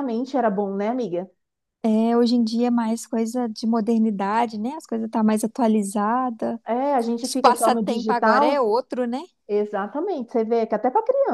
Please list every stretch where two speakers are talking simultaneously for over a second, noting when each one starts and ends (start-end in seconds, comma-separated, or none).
7.2-8.6